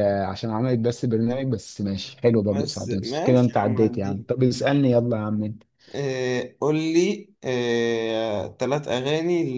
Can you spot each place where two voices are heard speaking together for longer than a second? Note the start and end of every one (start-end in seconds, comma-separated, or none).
2.5-4.2